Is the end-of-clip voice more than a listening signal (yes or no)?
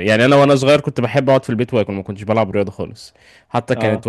no